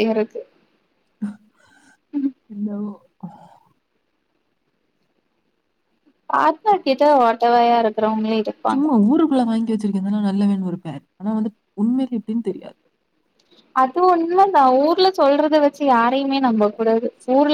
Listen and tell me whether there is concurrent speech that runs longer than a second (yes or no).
no